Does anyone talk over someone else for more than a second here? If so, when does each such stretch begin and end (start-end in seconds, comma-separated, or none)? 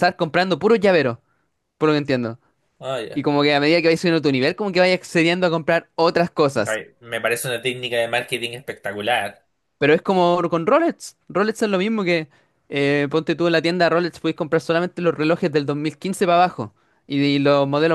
none